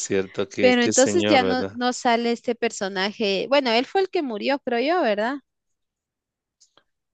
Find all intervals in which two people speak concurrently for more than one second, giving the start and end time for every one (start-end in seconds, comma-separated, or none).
0.6-1.8